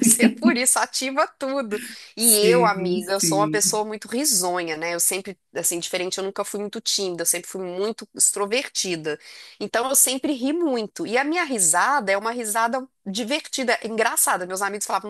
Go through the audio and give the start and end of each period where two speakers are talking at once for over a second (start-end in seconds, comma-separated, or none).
2.2-3.8